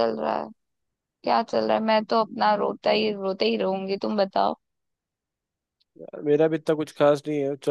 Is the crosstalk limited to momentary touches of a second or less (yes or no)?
yes